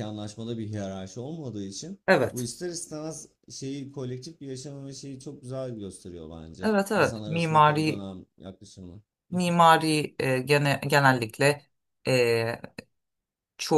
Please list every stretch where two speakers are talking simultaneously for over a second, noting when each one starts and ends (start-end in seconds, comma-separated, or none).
6.6-8.1